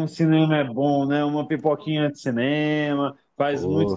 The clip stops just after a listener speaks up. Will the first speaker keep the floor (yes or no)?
no